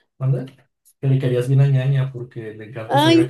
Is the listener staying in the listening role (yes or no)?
no